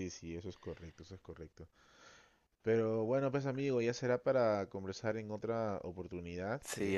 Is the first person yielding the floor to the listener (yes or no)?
no